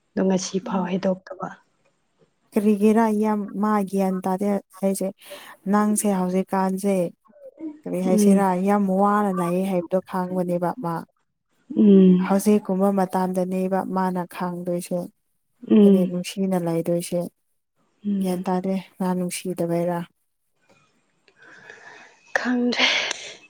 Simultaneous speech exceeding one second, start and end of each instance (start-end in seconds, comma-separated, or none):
none